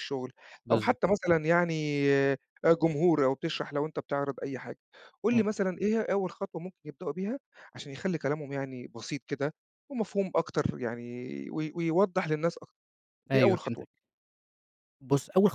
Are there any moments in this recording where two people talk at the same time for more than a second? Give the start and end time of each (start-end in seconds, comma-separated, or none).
none